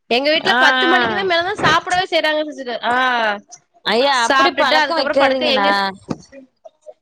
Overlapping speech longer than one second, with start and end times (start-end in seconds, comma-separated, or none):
4.3-5.7